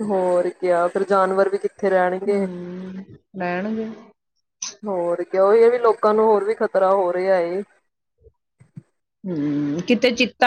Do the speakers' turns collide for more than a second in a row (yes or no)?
no